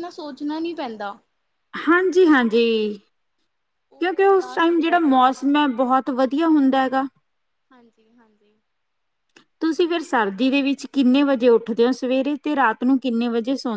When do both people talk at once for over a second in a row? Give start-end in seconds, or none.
4.0-5.5